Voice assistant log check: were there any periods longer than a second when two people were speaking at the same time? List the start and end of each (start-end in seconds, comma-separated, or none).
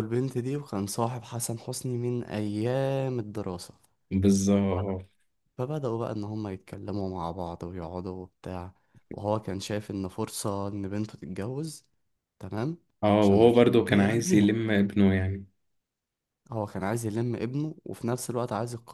13.2-14.6